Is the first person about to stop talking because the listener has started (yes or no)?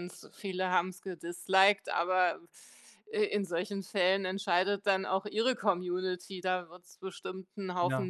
no